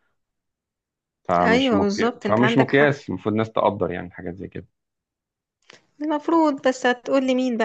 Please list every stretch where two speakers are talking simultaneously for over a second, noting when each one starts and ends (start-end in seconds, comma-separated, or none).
1.4-3.0